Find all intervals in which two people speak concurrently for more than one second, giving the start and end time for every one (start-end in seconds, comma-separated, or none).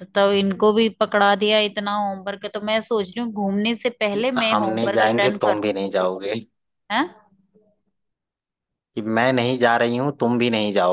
4.1-5.7